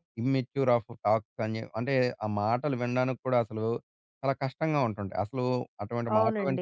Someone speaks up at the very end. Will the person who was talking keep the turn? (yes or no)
no